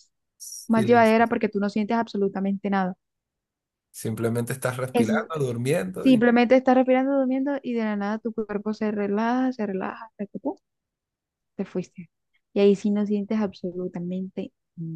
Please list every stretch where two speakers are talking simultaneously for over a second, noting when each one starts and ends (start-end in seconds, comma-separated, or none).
none